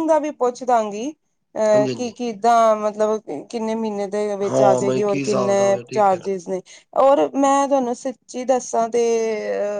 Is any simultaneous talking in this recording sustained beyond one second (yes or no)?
yes